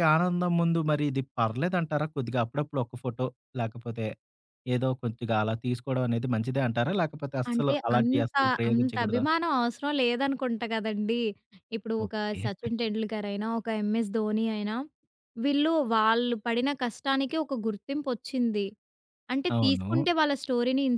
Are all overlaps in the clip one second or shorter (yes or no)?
no